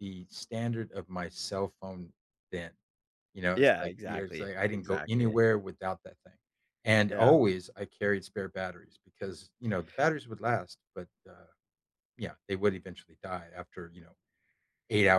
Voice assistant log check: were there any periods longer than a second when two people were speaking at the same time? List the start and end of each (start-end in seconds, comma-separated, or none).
3.6-5.4